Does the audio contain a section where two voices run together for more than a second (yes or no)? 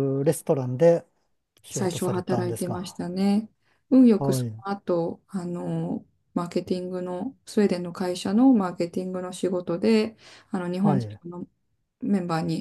yes